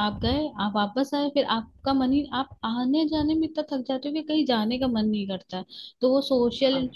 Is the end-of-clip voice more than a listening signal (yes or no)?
no